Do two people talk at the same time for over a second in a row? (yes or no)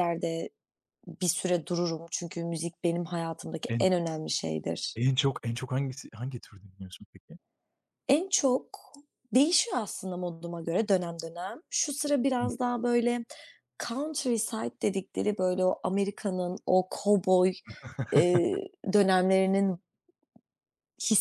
no